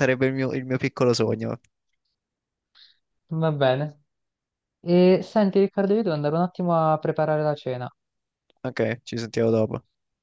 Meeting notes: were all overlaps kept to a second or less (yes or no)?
yes